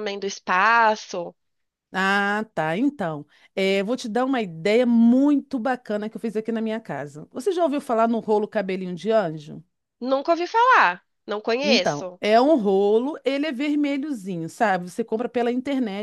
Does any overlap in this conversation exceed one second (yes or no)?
no